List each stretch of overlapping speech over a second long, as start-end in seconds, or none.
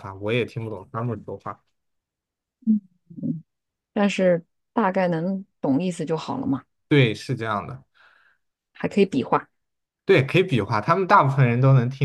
none